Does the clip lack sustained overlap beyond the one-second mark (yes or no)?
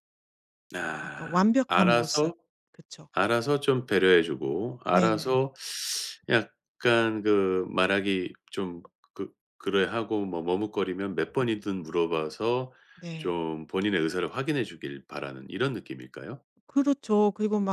no